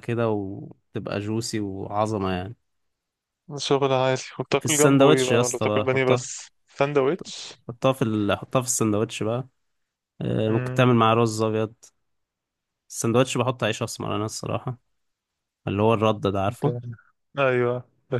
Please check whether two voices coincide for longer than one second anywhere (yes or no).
yes